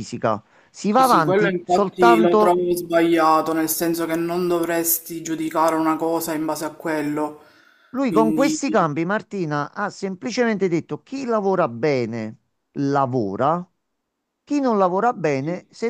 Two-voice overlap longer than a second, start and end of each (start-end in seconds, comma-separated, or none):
0.9-2.6